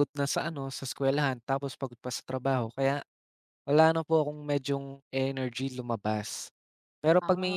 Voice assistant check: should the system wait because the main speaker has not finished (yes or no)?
yes